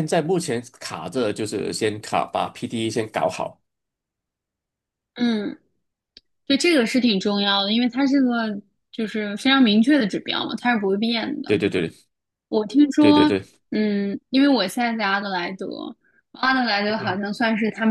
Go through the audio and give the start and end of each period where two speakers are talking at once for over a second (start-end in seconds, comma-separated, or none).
none